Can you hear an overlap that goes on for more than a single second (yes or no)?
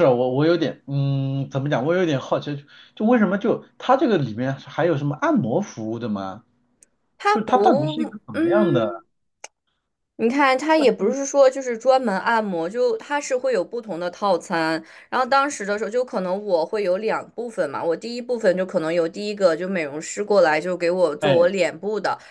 yes